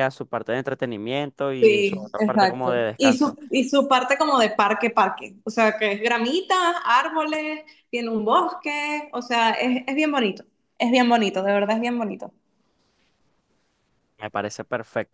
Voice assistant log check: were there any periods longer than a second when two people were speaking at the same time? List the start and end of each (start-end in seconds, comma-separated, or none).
1.6-3.4